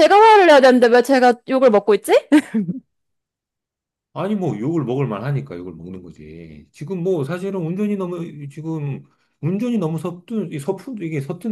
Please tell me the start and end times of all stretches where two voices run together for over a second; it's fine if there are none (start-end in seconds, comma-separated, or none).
none